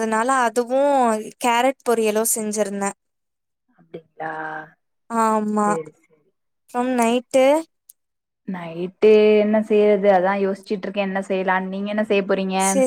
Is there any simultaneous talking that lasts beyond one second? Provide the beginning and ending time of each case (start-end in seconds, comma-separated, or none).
none